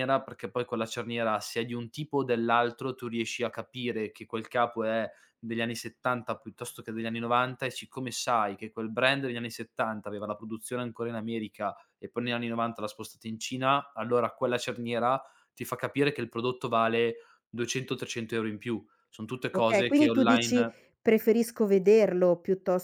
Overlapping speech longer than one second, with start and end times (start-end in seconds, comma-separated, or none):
19.5-20.7